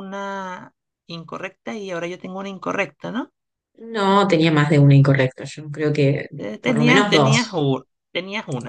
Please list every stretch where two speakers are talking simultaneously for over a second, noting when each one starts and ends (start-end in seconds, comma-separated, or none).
6.4-7.7